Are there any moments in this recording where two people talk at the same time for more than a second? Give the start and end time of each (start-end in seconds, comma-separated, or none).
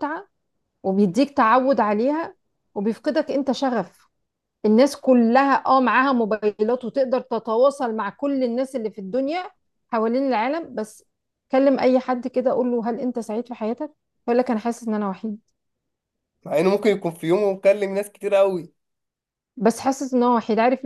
none